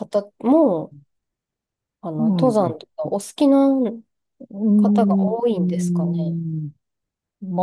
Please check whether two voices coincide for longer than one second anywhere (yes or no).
yes